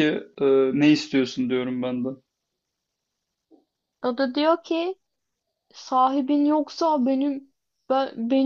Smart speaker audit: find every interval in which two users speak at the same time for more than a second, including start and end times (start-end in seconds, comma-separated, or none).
none